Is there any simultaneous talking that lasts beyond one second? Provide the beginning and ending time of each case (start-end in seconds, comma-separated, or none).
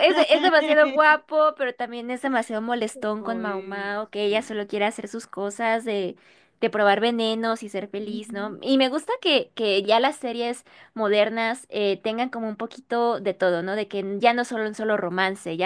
3.3-4.6